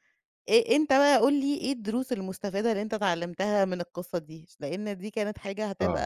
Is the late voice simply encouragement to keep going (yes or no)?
yes